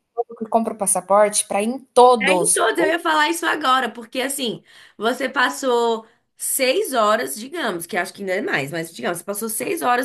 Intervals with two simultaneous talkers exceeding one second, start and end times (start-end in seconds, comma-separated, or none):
none